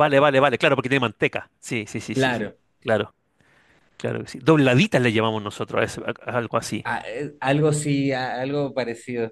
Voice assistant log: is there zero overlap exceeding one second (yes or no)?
yes